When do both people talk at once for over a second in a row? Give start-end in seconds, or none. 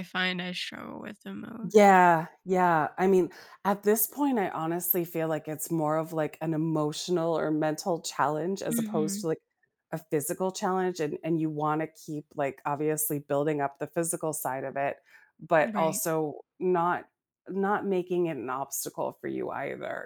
none